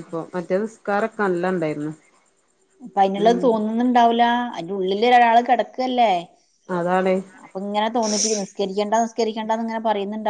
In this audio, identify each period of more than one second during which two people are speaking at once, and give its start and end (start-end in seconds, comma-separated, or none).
none